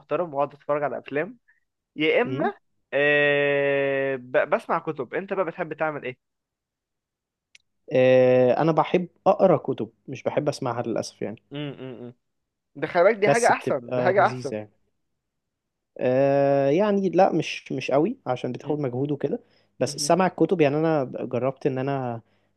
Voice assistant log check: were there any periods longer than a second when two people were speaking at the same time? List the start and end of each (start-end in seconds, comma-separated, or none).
13.2-14.5